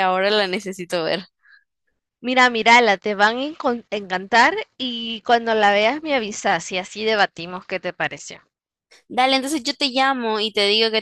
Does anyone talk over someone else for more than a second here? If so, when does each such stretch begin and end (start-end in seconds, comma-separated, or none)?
none